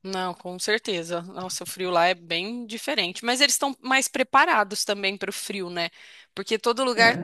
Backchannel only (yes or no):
yes